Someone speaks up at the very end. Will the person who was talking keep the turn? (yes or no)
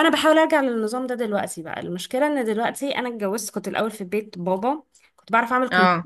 yes